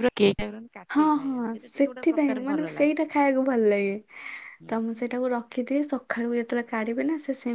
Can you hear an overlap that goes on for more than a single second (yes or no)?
yes